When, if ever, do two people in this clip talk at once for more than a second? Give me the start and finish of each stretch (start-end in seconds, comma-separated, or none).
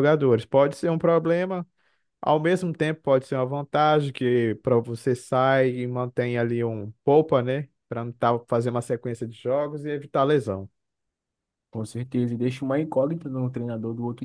none